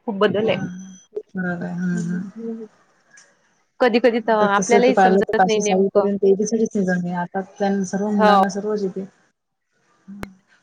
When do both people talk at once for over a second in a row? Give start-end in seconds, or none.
4.4-6.1